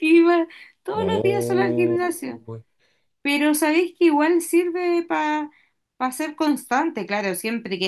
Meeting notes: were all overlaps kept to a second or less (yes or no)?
no